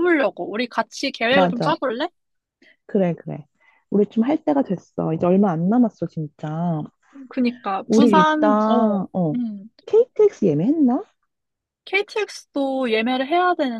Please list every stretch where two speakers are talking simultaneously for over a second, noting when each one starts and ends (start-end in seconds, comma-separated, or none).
7.9-9.4